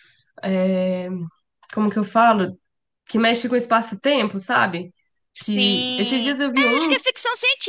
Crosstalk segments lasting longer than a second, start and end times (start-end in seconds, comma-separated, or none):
5.4-7.0